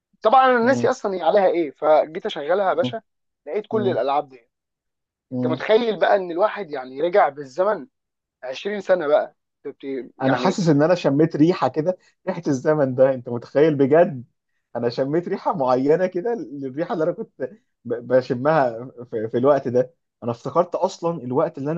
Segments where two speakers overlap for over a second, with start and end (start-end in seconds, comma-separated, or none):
none